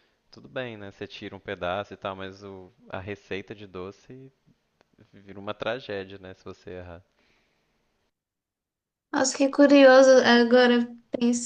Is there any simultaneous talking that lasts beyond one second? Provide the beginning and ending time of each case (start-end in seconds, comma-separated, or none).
none